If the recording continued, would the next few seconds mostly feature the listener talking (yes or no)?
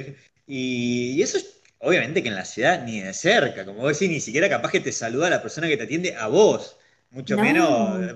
no